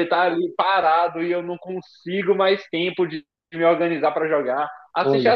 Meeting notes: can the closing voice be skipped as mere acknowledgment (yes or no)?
yes